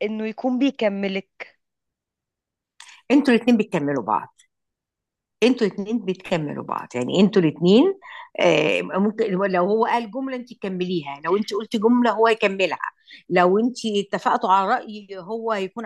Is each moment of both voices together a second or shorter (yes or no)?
yes